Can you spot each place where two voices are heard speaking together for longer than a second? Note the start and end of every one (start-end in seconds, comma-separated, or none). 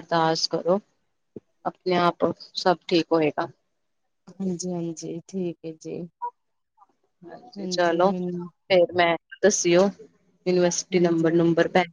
none